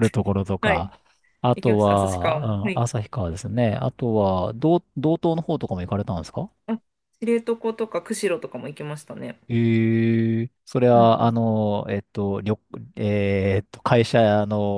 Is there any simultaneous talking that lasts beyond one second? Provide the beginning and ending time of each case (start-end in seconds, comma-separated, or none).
1.6-2.9